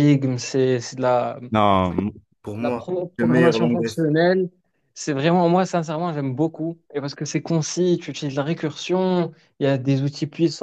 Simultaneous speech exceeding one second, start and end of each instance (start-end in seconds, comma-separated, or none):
2.6-4.0